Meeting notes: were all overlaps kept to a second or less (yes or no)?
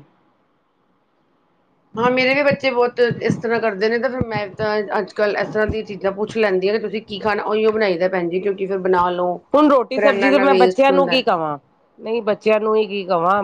no